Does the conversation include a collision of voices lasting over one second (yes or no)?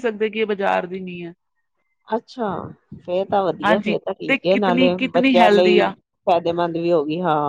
yes